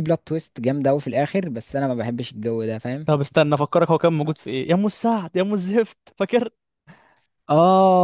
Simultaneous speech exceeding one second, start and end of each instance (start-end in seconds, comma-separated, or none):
none